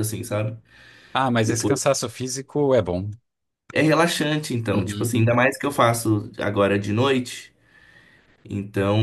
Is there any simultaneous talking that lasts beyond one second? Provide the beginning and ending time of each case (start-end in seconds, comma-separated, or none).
none